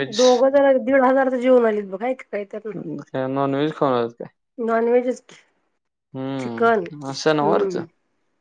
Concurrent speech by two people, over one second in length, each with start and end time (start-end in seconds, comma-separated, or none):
6.4-7.8